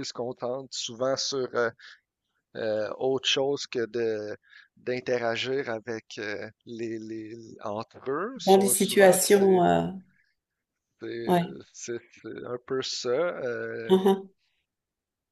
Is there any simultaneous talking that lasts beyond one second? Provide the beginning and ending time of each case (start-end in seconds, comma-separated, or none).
8.4-9.7